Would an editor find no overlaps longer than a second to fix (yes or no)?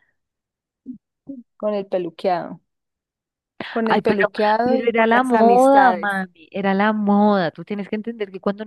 no